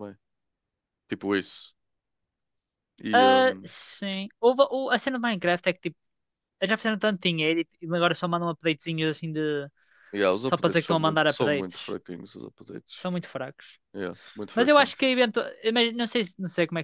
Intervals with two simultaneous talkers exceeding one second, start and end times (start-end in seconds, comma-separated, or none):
10.5-11.9